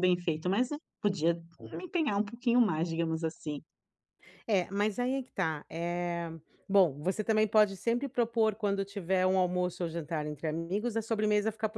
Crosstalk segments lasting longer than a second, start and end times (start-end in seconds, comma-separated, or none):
none